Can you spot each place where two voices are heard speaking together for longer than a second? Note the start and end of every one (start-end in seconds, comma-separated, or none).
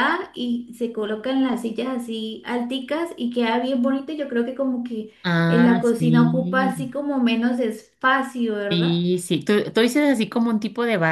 5.5-6.7